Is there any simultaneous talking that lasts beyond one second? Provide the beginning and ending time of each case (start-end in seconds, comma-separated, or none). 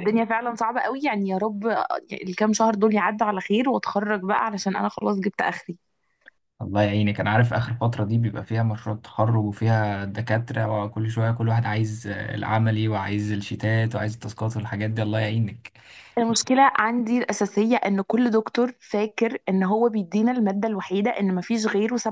none